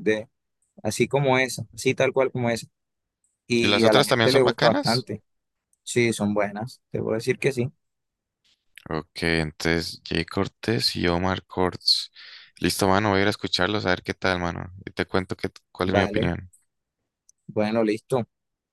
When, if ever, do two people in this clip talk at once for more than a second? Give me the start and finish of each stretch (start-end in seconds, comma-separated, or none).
3.6-5.1